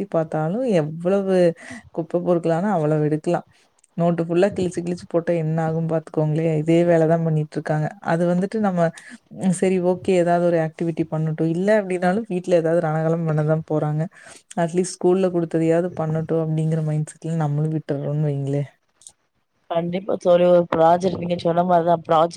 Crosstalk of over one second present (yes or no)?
no